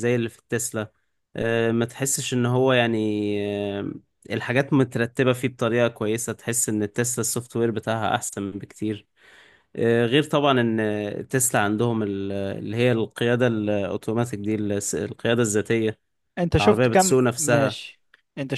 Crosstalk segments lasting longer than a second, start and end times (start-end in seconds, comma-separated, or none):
16.6-17.8